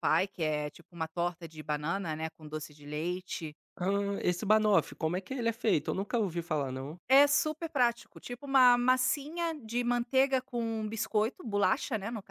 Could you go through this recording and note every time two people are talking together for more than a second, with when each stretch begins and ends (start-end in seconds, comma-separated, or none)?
none